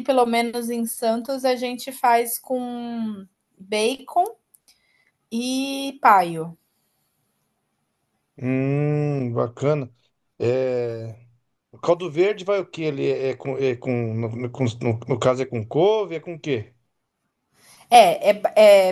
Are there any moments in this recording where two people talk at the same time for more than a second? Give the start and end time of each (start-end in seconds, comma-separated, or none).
none